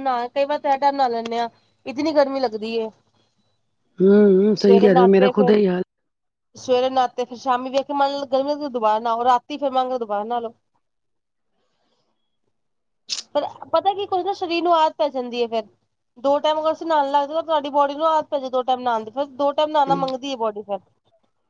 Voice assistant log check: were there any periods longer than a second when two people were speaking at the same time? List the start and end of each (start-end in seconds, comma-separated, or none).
none